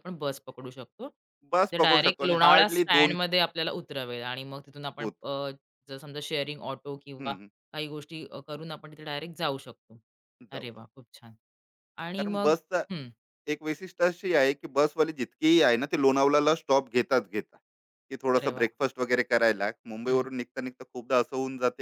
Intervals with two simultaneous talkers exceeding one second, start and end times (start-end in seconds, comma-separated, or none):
1.7-3.2